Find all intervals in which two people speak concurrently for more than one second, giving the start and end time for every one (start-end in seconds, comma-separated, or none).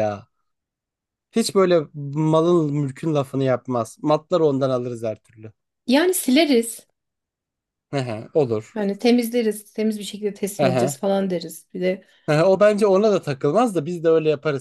none